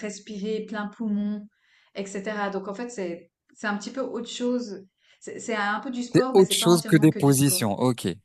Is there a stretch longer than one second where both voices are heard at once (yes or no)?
yes